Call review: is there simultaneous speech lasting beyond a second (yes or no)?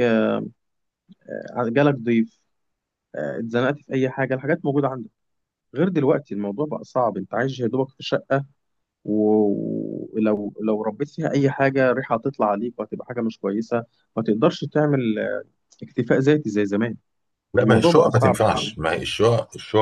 yes